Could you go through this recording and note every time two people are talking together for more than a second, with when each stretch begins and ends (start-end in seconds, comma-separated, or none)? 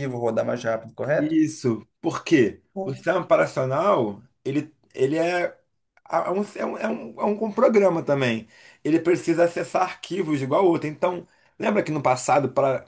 none